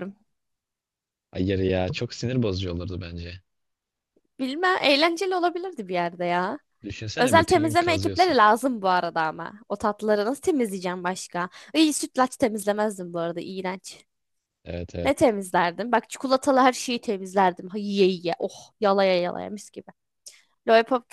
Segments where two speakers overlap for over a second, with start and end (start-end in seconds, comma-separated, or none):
7.2-8.4